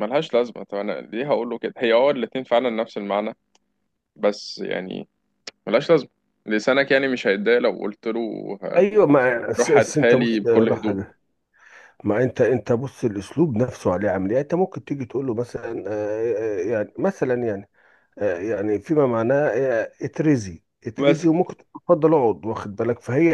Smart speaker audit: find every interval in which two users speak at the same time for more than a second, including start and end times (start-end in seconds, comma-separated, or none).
9.6-10.9